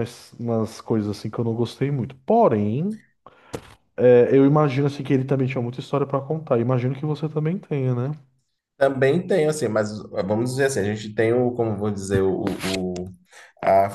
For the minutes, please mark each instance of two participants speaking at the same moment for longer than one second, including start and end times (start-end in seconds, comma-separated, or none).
none